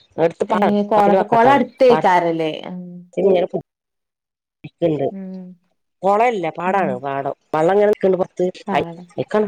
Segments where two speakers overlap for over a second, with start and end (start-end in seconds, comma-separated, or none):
0.6-2.2